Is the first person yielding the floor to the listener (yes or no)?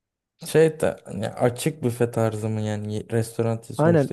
yes